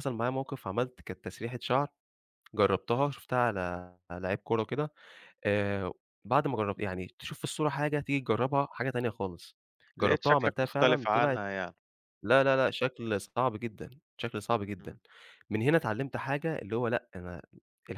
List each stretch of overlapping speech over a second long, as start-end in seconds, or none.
10.0-11.4